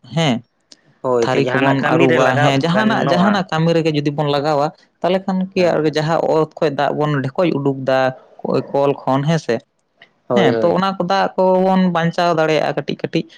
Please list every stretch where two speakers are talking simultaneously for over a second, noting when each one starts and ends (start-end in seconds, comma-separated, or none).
1.2-3.5